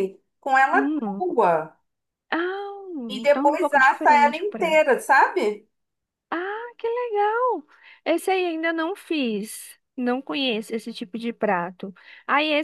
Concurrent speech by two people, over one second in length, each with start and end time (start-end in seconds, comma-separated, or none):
3.2-4.8